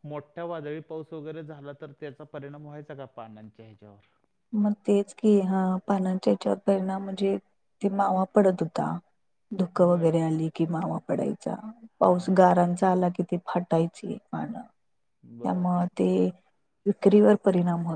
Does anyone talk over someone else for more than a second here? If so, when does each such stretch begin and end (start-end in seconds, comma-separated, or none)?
none